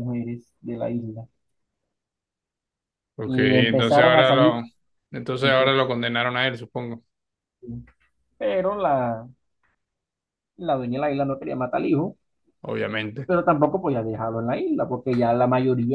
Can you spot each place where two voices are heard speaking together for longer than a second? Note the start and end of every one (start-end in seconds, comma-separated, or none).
3.2-4.6